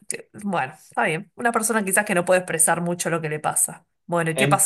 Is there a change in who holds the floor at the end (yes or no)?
yes